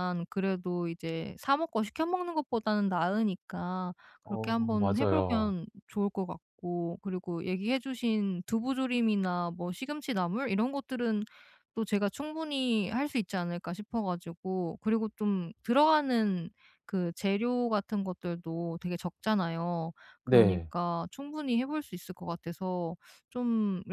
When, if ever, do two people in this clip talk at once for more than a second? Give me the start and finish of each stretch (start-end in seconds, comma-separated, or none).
4.2-5.5